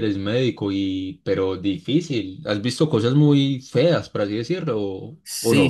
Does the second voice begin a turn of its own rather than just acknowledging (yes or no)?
yes